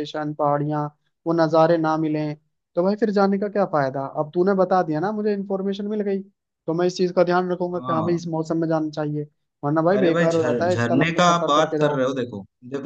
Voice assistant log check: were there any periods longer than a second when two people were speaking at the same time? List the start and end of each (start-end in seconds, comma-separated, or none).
9.9-12.0